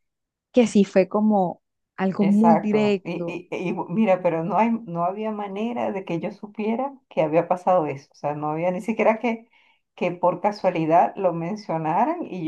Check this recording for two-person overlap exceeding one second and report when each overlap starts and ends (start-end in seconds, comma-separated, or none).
2.2-3.4